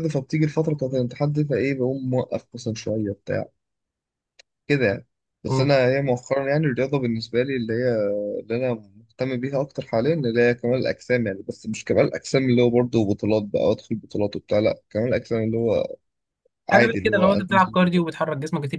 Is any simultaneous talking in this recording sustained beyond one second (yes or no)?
yes